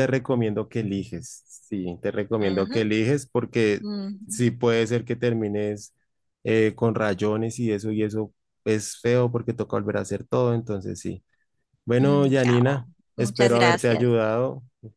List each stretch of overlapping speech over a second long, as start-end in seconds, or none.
12.0-14.2